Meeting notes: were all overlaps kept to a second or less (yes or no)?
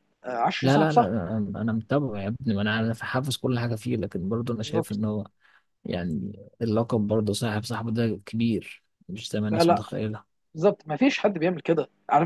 yes